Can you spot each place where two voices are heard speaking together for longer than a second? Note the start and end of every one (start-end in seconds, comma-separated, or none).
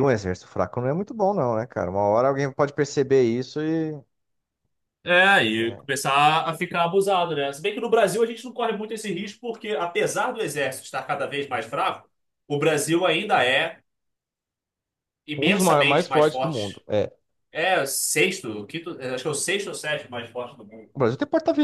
15.4-16.8